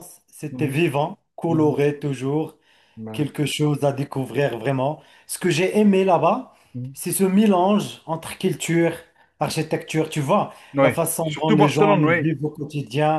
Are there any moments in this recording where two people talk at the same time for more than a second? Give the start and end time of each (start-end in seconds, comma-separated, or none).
10.7-12.3